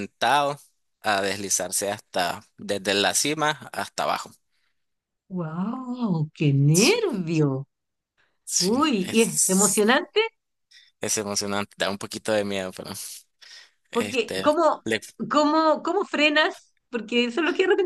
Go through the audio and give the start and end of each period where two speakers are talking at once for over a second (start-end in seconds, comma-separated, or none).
8.6-10.0